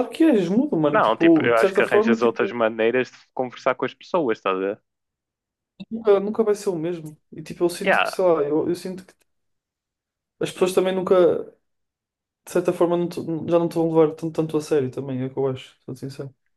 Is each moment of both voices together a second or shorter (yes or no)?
no